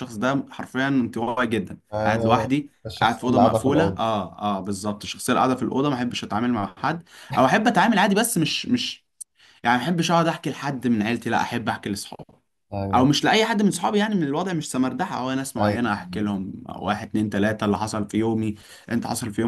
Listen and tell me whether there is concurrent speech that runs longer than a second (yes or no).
yes